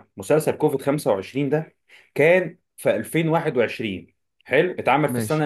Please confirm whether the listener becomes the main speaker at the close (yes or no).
no